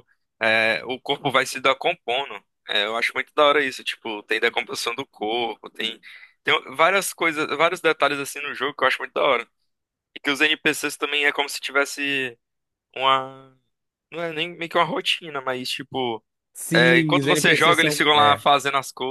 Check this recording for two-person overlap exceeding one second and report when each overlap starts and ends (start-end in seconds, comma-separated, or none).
16.7-18.4